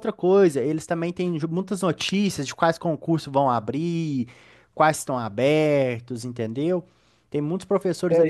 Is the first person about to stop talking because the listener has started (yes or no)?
yes